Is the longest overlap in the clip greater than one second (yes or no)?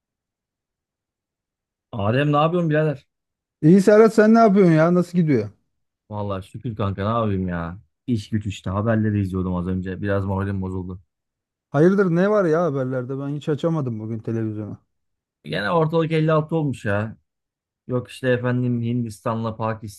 no